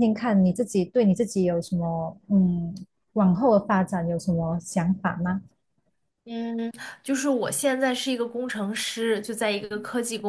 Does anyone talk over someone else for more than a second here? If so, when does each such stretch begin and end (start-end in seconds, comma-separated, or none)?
none